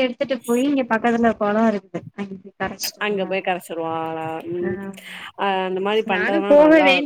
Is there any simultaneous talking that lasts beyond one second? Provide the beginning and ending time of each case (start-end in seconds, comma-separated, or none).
none